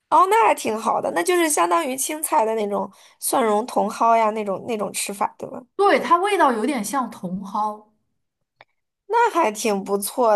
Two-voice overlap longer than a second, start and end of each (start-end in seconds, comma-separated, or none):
none